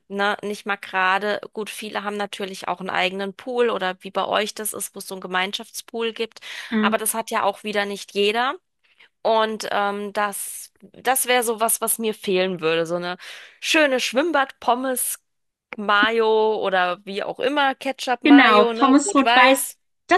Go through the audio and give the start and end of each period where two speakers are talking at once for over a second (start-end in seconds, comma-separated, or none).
18.2-19.7